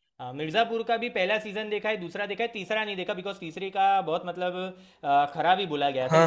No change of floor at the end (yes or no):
no